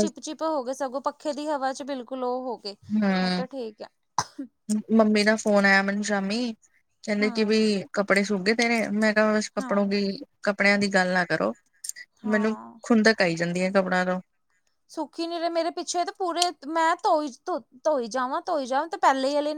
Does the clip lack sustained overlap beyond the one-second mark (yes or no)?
yes